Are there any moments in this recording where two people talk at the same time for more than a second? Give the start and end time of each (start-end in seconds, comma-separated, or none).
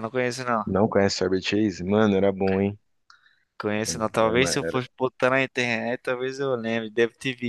none